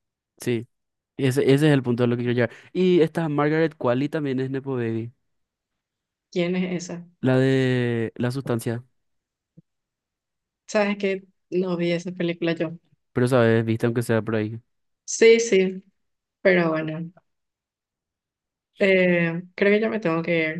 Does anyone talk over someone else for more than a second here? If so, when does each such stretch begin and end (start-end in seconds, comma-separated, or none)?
none